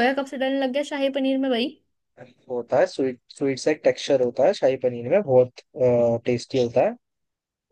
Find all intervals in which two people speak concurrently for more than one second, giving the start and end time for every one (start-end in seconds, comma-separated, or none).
none